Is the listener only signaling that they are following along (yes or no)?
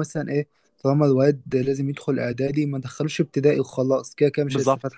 no